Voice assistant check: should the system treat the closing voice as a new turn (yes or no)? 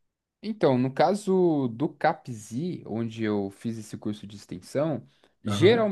no